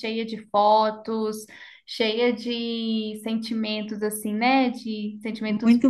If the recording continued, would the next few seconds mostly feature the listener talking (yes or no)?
yes